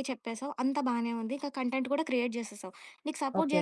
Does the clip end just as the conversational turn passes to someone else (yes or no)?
no